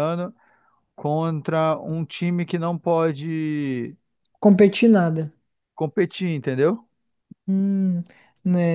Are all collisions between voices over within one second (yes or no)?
yes